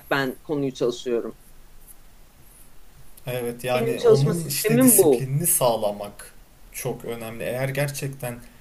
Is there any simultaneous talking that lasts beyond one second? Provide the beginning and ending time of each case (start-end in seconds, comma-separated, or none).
3.8-5.3